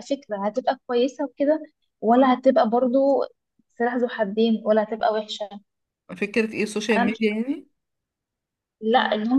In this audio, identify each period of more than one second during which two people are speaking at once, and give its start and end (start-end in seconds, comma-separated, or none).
none